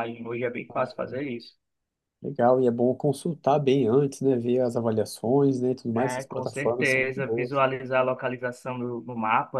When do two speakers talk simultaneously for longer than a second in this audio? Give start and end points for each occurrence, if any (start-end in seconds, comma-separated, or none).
5.9-7.6